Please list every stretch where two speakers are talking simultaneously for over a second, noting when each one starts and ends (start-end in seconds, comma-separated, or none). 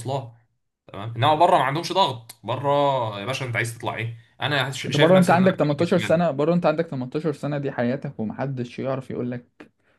4.9-6.3